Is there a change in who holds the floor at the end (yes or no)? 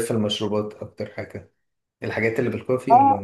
yes